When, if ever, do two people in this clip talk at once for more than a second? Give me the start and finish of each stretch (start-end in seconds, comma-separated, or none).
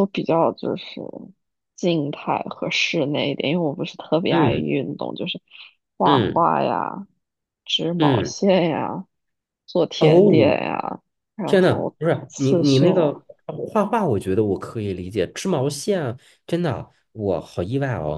11.5-13.1